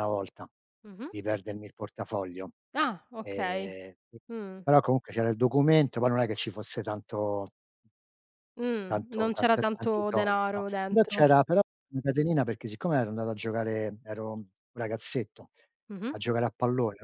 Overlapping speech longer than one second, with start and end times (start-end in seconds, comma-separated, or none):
8.9-11.3